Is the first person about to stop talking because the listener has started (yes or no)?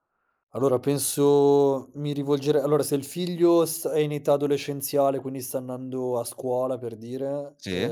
no